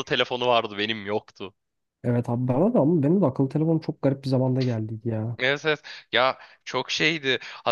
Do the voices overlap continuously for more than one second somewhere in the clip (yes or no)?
no